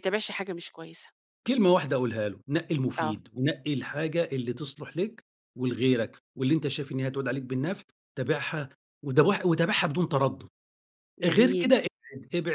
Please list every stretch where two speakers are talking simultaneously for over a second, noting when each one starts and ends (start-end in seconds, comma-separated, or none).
none